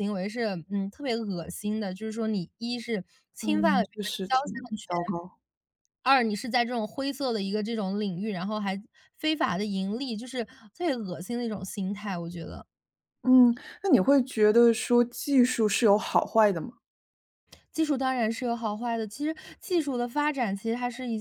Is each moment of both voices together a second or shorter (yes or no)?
no